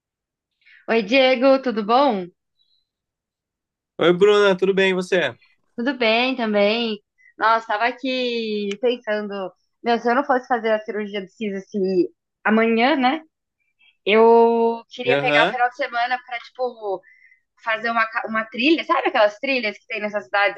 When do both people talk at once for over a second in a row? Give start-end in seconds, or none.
none